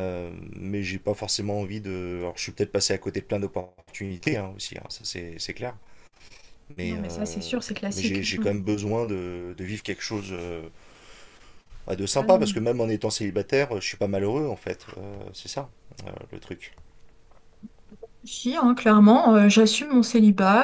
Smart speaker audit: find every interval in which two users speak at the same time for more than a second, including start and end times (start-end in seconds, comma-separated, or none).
6.8-8.5